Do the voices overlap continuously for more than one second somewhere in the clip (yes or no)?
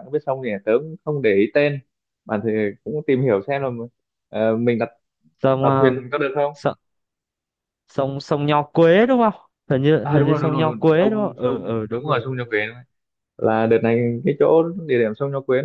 yes